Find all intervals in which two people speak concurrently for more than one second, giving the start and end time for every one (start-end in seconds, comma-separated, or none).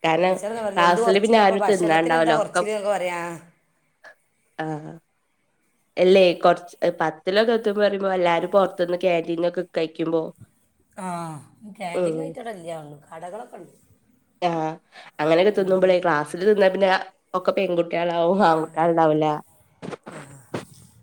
1.1-2.6